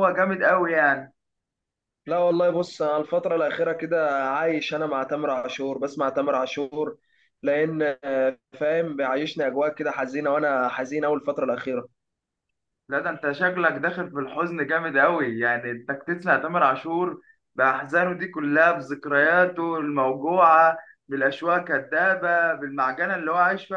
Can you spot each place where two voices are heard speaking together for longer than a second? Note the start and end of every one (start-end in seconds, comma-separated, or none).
none